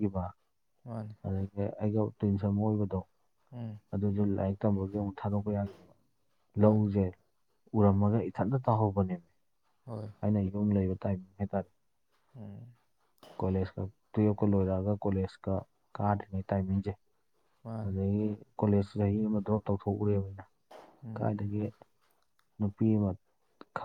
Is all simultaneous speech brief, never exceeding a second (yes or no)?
yes